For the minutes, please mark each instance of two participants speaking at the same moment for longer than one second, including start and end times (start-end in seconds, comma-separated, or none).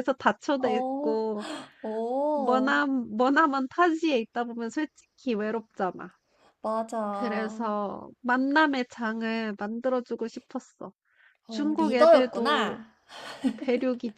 11.5-12.8